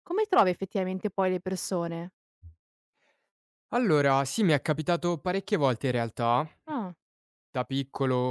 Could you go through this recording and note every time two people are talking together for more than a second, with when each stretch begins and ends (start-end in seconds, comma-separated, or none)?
none